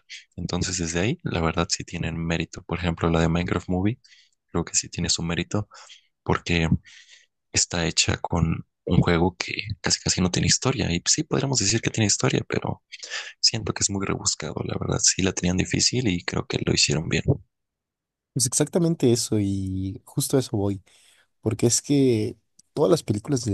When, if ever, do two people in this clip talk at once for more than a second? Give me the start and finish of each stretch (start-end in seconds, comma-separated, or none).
none